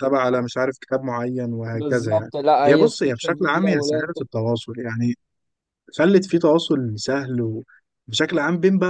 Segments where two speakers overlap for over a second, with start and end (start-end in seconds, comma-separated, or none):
1.7-3.7